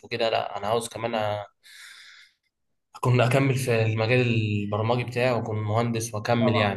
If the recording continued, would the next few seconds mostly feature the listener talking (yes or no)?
yes